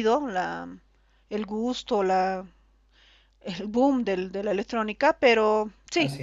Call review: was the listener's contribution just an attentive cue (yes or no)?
yes